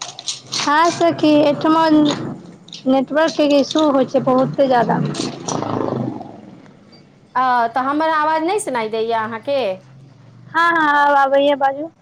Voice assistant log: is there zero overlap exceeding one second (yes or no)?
yes